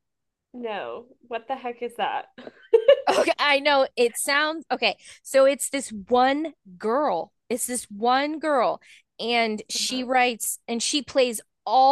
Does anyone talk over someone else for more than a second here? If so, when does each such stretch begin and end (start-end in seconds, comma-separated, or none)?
none